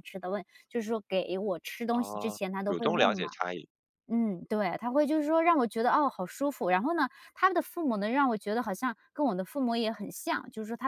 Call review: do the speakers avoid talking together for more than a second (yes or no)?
no